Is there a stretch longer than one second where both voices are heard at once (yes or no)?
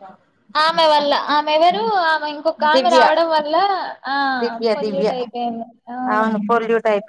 no